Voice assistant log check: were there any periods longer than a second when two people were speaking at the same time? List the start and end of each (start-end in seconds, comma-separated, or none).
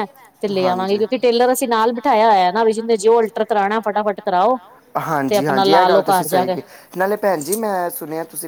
5.3-6.5